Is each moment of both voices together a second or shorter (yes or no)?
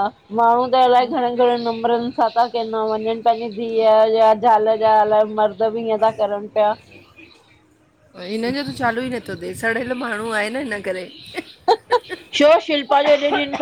yes